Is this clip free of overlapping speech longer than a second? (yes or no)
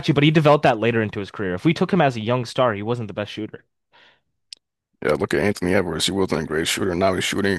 yes